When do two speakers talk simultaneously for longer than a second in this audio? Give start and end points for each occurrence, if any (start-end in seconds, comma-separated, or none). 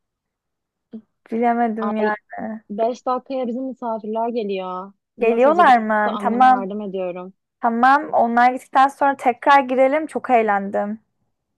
5.2-6.7